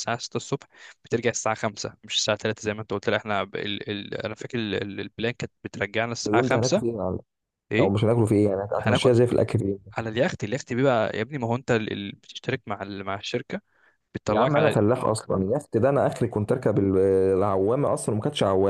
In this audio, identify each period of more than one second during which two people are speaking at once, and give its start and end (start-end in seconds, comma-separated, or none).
none